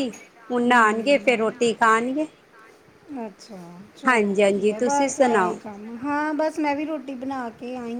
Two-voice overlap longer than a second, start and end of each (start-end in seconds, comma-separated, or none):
4.1-5.6